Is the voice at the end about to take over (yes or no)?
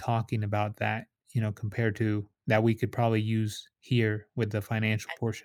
yes